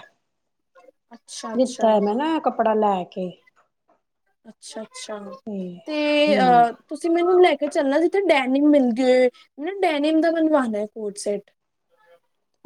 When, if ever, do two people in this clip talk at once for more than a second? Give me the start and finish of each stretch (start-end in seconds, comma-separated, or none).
none